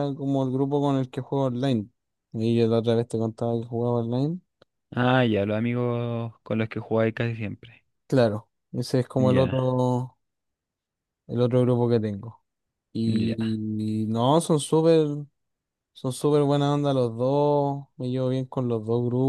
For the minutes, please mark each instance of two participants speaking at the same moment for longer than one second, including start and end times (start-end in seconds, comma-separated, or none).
none